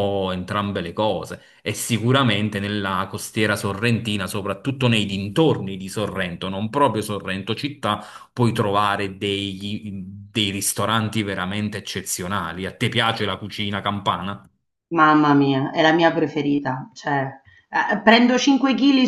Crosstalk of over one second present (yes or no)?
no